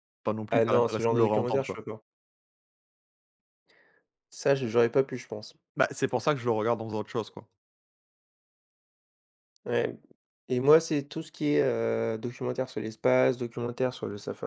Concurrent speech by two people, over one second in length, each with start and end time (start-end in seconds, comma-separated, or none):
0.5-1.8